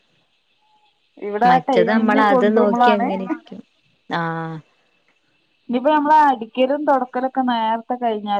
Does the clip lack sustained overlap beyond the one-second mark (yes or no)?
no